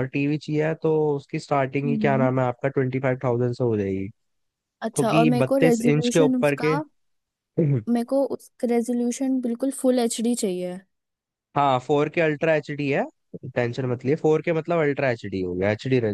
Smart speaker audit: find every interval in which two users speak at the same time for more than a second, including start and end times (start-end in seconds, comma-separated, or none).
4.9-6.7